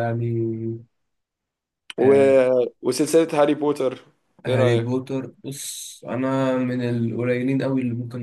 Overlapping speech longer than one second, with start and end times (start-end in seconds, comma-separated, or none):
none